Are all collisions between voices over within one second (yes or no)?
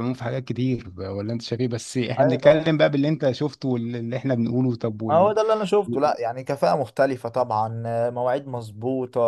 yes